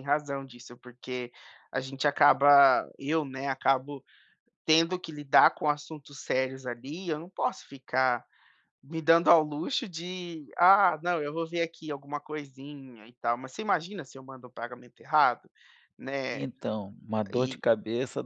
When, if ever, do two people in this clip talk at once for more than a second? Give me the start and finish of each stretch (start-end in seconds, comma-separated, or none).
none